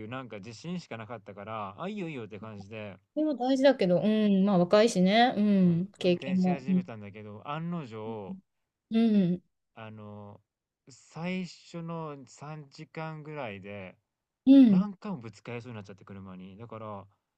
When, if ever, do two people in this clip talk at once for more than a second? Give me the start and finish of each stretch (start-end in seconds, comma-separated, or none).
5.6-6.9